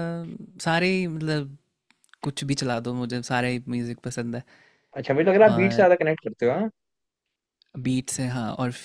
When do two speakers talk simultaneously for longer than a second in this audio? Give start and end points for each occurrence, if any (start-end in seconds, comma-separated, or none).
none